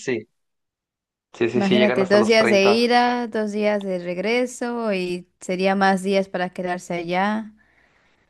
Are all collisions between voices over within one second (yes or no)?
no